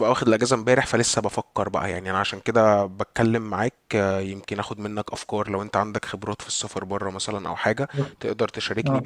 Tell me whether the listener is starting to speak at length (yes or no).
no